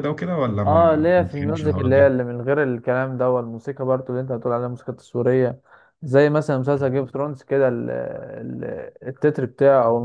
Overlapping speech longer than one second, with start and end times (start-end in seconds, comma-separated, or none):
0.7-2.1